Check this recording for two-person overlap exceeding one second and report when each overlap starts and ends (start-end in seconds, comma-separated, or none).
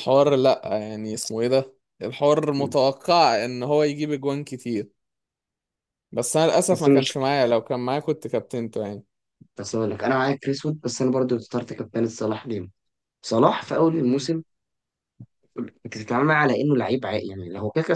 none